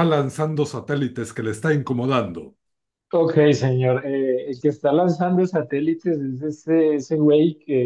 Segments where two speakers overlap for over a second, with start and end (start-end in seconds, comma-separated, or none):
none